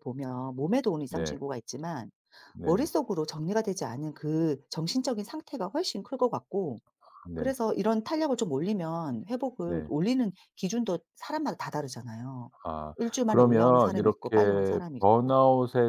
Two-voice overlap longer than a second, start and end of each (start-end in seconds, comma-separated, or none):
13.0-15.3